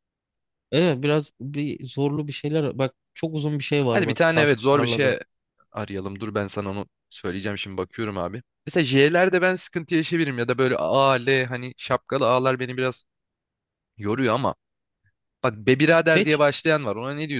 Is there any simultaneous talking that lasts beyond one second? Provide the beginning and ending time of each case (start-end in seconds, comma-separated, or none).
3.9-5.2